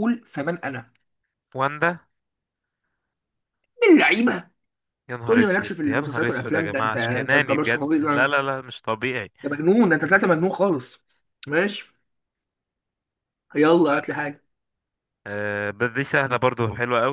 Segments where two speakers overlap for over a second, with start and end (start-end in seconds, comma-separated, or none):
5.2-8.4